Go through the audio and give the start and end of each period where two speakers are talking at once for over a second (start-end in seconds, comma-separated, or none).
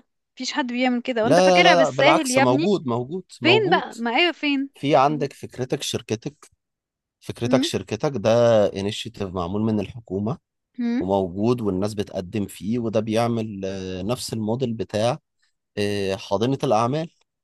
1.2-2.7